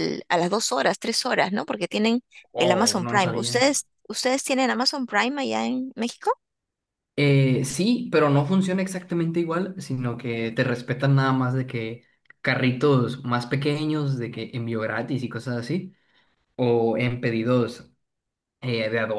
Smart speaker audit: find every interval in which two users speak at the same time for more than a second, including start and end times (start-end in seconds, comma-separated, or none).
2.5-3.7